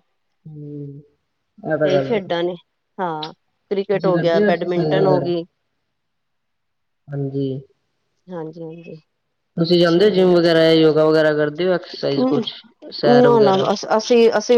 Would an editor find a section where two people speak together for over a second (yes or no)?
yes